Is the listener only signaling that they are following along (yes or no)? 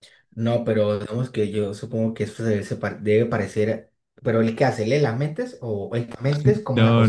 no